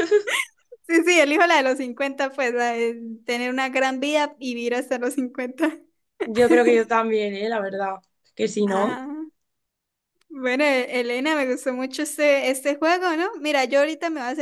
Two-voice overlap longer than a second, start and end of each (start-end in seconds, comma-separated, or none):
none